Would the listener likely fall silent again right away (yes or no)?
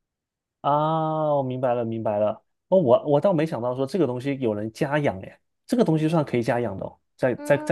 no